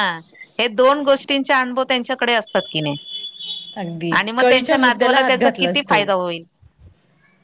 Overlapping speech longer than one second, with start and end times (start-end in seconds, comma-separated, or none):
4.2-6.0